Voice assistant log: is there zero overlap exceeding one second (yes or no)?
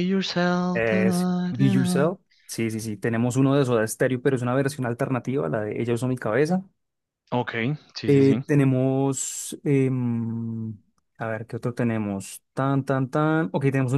no